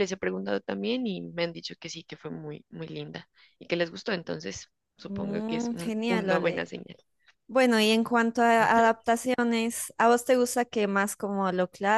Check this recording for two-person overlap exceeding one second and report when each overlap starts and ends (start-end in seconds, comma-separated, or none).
5.1-6.7